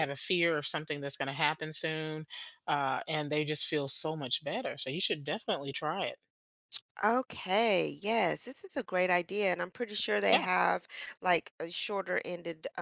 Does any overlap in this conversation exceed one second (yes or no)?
no